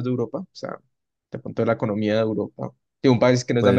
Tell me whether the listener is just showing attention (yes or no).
yes